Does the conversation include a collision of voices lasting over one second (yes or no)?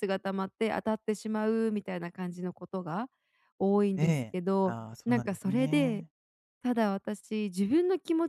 yes